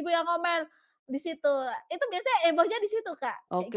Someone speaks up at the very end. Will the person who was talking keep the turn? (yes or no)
no